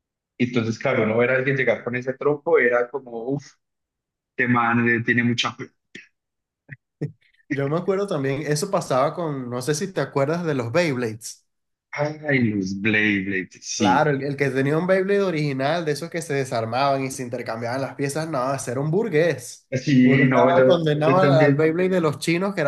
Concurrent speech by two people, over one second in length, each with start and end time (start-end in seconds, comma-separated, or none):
19.7-21.8